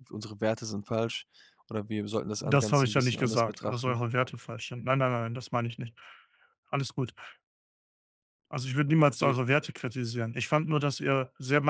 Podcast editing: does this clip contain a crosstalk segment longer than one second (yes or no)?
yes